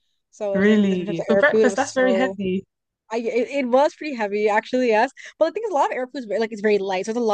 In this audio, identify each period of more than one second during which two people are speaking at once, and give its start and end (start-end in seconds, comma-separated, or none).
0.5-2.4